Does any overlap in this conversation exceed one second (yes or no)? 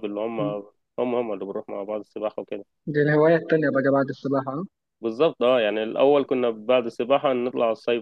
no